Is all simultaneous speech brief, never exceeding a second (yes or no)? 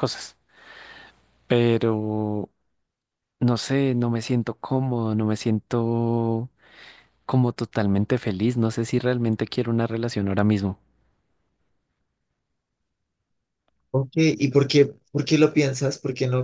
yes